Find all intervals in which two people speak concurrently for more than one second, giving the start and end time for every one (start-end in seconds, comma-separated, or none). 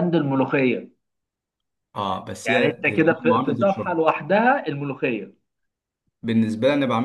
2.5-4.0